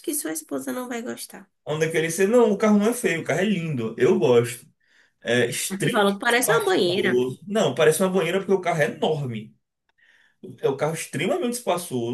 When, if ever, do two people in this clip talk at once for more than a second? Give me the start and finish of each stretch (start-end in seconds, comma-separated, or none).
5.7-7.2